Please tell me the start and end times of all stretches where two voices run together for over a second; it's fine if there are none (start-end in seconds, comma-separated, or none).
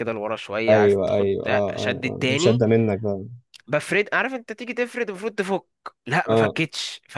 0.7-2.6